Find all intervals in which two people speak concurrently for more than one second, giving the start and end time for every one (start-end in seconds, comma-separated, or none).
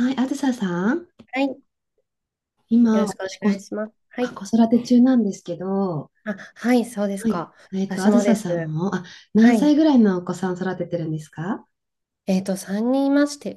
2.9-4.4, 7.1-8.7